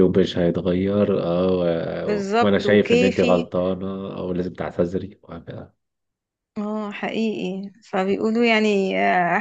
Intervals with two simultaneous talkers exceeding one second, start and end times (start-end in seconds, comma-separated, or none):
2.1-3.5